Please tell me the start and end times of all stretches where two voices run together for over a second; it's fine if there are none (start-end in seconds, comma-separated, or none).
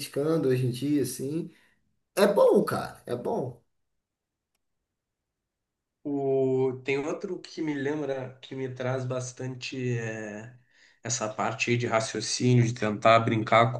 none